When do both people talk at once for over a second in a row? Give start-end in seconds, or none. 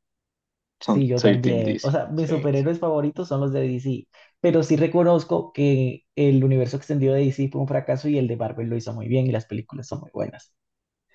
0.8-2.5